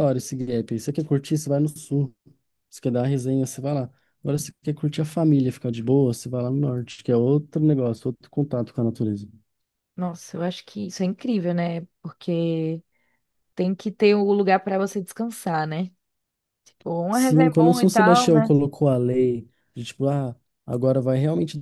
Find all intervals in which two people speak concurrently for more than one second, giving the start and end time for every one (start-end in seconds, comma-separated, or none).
17.1-18.5